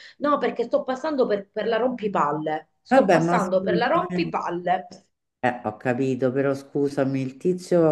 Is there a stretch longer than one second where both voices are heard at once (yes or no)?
yes